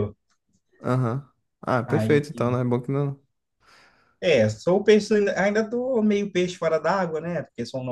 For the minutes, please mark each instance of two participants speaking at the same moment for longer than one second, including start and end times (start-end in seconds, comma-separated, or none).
none